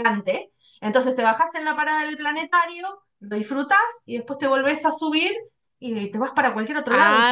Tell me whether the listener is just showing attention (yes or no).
no